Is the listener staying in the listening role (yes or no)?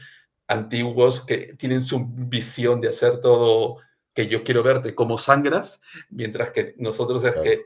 yes